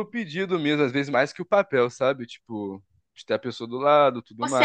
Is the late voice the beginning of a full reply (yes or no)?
yes